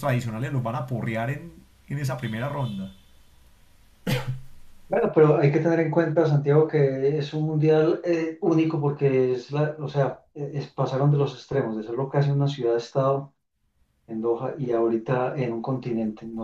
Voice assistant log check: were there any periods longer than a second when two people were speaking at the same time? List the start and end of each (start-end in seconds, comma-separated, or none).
none